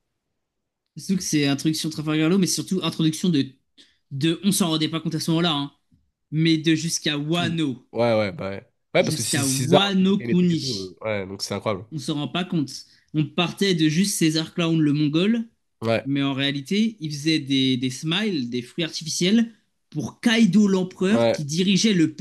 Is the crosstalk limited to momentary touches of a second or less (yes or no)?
no